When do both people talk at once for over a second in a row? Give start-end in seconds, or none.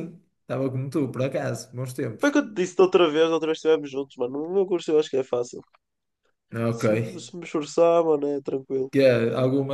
none